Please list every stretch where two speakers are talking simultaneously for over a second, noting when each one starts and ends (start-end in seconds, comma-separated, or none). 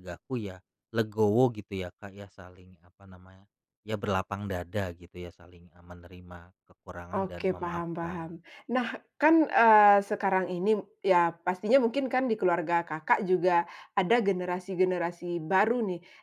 7.1-8.4